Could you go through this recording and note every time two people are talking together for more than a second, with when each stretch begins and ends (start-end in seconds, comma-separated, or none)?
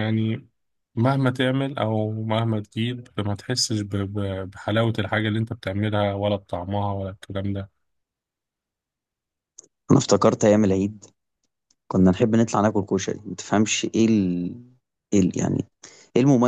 none